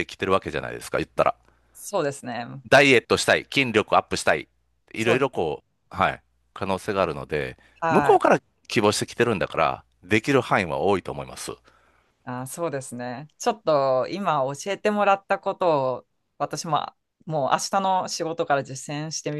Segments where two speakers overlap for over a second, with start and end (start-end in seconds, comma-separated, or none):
none